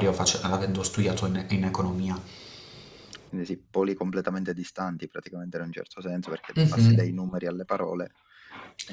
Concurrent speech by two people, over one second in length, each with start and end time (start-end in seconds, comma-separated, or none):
none